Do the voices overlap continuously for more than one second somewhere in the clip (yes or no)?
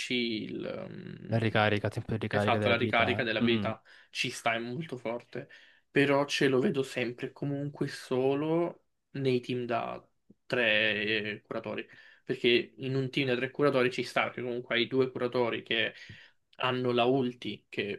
yes